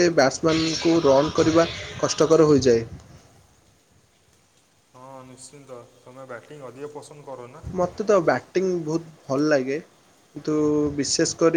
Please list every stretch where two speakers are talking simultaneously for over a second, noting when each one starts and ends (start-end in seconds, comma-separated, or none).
none